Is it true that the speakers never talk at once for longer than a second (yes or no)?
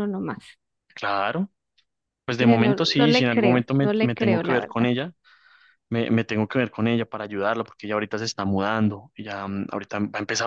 no